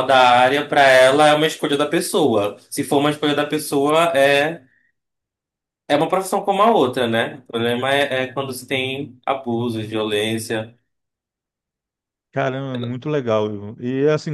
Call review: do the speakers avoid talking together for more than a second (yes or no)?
yes